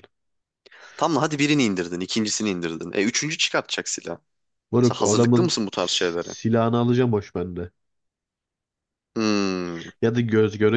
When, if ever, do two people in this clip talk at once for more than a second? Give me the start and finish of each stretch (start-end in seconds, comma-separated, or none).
4.8-6.3